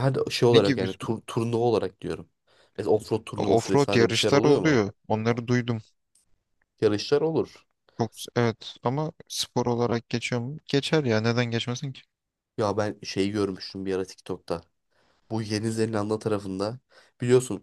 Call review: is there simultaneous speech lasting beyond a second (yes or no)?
yes